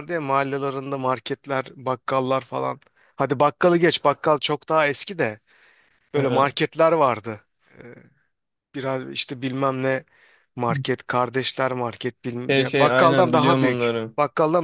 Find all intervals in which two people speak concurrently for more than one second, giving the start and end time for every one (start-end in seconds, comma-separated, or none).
12.5-14.1